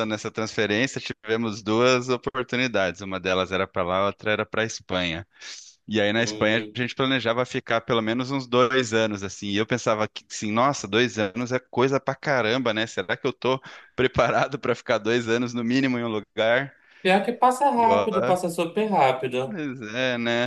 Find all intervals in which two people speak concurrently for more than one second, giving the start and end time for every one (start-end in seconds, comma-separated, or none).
none